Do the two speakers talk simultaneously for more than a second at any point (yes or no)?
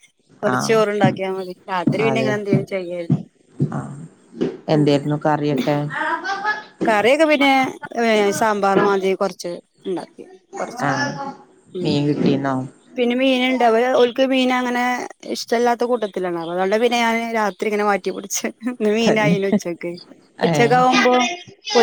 no